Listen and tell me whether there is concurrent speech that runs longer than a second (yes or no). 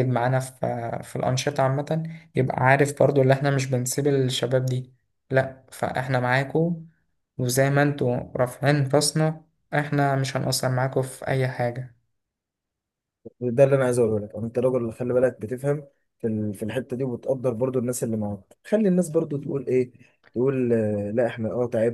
no